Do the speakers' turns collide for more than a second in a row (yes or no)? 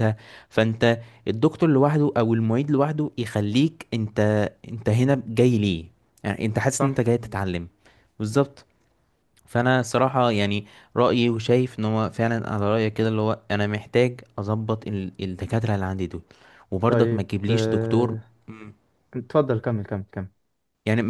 yes